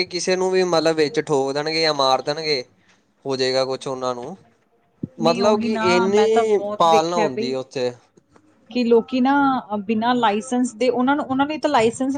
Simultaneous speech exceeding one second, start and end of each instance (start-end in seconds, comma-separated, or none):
5.2-7.5